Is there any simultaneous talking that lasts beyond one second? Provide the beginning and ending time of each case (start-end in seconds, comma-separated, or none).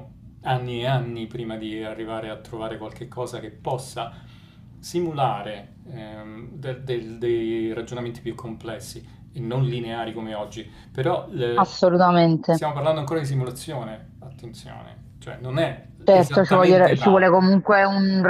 16.0-17.2